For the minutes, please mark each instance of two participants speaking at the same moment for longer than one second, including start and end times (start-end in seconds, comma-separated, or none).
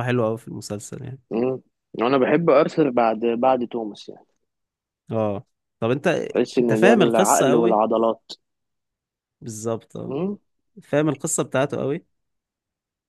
6.6-7.8